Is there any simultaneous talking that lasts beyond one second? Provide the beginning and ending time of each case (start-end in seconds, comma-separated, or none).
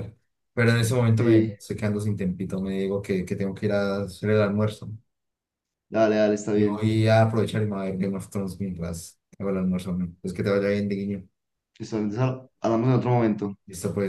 none